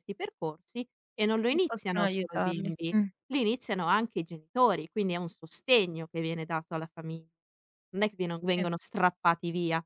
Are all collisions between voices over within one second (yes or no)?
no